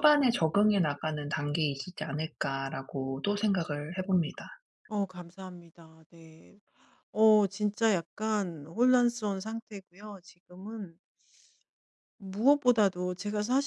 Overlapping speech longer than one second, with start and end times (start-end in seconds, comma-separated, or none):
none